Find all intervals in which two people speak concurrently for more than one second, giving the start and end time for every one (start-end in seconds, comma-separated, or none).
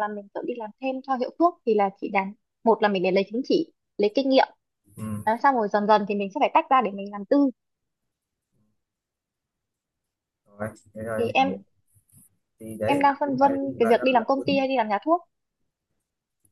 12.8-14.7